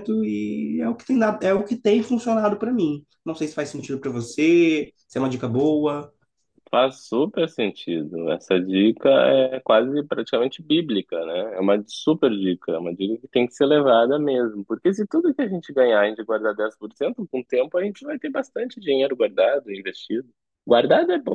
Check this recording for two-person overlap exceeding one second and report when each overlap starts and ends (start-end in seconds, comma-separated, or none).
none